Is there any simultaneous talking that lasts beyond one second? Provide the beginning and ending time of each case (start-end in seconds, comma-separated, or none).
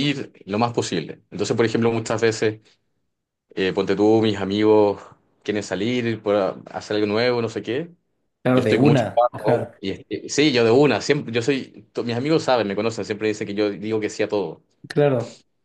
8.5-9.8